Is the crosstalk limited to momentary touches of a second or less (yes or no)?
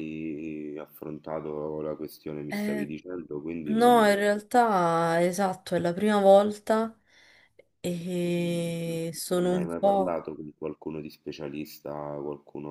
no